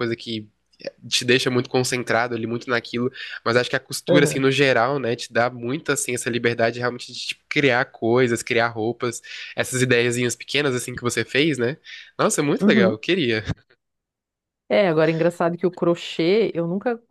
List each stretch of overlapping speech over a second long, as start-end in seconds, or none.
none